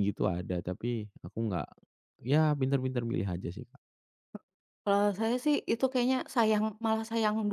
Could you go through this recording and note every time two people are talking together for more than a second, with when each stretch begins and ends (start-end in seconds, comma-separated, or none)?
none